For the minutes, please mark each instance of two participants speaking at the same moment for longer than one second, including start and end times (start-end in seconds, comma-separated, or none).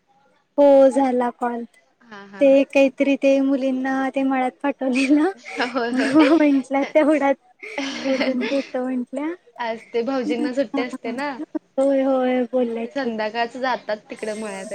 none